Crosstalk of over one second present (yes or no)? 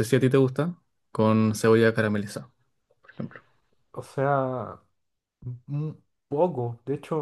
no